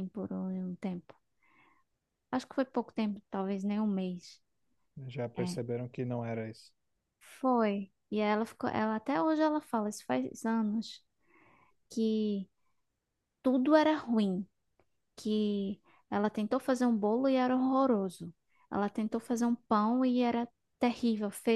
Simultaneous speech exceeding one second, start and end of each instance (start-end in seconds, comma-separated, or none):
none